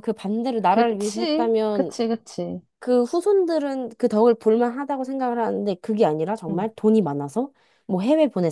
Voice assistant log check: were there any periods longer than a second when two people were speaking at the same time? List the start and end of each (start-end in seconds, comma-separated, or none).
0.7-1.9